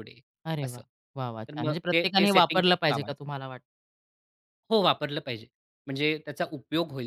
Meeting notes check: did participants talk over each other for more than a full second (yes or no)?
yes